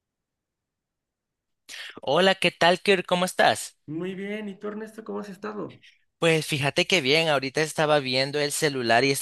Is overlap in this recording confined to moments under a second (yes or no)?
yes